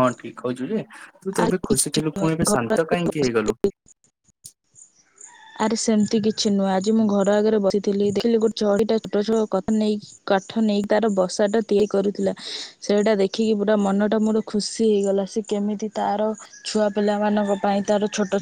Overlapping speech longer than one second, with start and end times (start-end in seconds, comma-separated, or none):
1.4-3.2